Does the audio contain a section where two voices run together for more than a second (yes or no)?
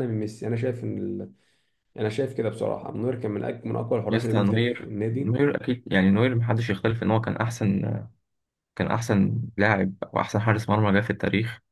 yes